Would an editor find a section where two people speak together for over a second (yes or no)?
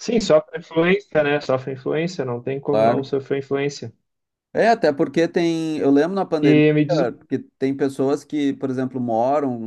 no